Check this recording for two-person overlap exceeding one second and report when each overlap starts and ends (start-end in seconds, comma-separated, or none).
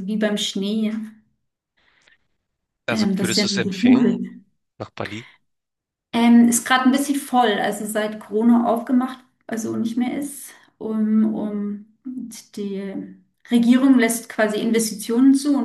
2.9-4.2